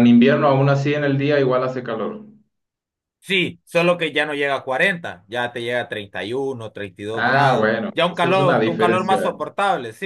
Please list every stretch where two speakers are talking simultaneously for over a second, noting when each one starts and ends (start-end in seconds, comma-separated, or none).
7.1-9.3